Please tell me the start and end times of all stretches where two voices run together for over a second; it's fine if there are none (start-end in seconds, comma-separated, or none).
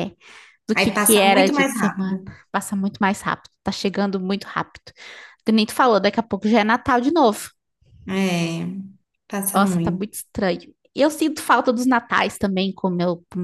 0.8-2.3